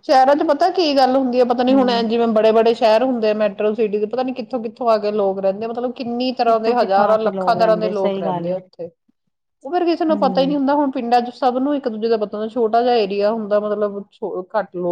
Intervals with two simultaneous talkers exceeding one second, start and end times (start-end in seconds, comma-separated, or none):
6.5-8.6